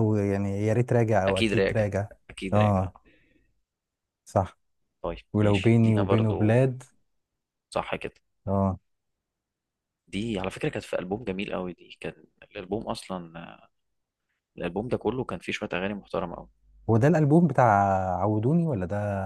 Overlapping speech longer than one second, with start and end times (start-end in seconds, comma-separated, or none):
5.3-6.6